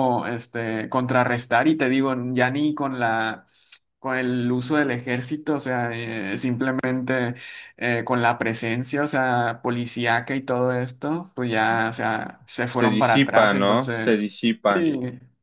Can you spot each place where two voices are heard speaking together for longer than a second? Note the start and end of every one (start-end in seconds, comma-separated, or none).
12.7-14.9